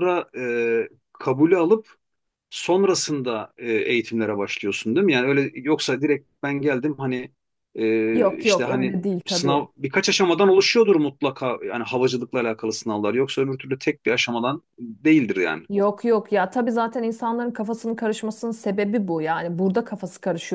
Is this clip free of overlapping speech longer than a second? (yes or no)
no